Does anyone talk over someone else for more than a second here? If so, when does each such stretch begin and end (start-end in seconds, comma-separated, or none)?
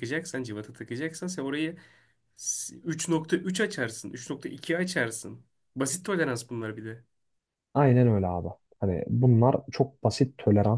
none